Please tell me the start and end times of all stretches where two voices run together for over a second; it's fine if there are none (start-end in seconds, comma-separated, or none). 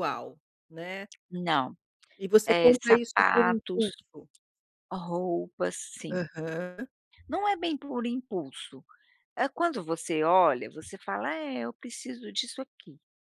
2.5-3.9